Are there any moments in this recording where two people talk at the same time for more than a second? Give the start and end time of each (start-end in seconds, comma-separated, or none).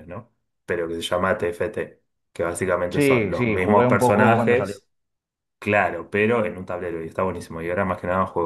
2.9-4.8